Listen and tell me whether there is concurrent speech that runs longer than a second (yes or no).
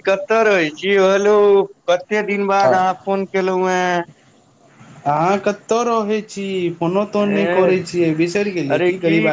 no